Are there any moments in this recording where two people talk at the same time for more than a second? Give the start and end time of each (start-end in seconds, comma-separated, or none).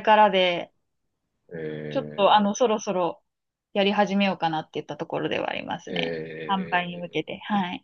5.9-7.3